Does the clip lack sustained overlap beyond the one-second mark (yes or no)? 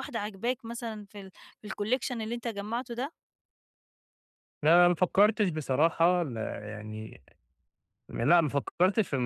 yes